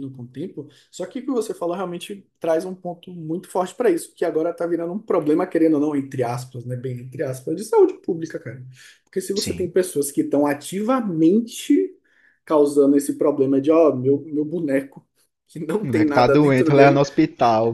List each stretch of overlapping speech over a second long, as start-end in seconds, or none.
15.8-17.0